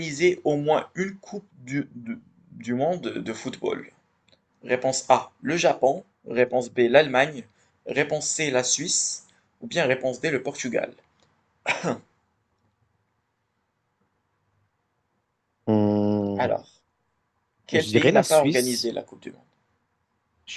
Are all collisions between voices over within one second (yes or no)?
no